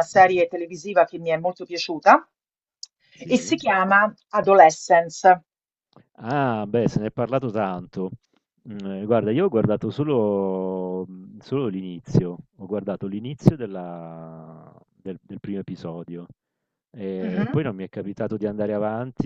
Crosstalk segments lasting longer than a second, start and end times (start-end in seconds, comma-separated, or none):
none